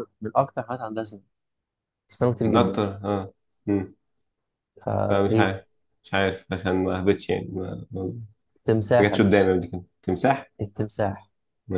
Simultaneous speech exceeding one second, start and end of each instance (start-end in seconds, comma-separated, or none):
none